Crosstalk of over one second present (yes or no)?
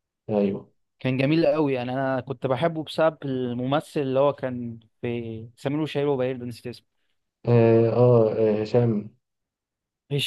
no